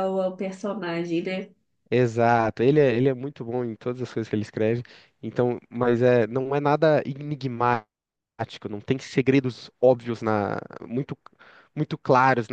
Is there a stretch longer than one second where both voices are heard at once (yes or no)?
no